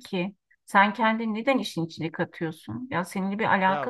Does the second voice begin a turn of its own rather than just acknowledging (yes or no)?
no